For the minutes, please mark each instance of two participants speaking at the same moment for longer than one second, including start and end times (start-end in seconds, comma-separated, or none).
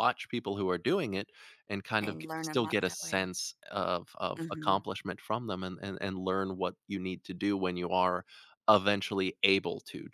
2.0-3.3